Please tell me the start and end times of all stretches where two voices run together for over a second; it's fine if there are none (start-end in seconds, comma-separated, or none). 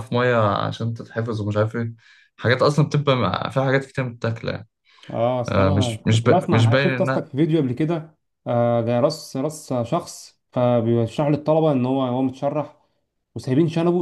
5.5-7.3